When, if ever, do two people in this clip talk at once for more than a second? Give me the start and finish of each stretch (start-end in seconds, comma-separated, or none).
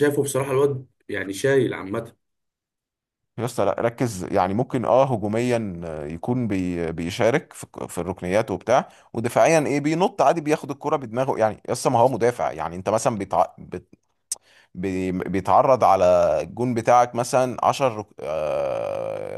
none